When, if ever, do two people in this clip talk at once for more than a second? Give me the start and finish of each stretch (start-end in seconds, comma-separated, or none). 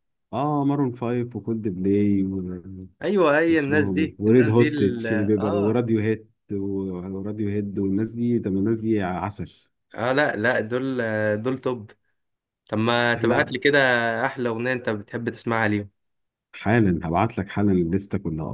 3.5-5.8